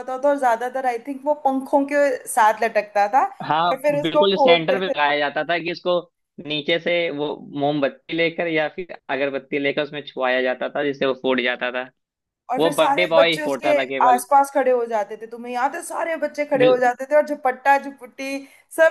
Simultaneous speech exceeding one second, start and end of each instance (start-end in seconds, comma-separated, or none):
3.7-5.2, 12.6-14.2